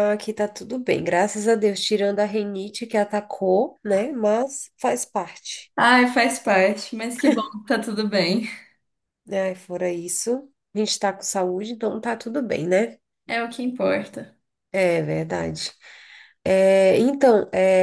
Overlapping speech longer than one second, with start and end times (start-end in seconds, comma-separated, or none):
none